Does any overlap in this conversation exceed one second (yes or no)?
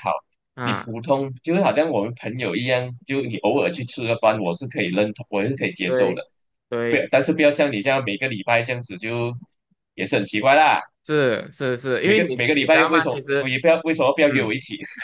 yes